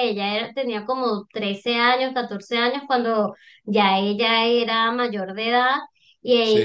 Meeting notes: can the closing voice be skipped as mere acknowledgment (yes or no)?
yes